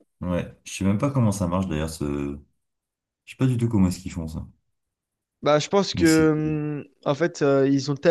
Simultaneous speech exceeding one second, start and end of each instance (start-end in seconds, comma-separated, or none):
none